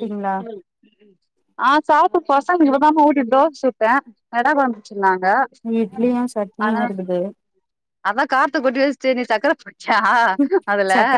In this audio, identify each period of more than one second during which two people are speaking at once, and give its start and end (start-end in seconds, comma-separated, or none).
none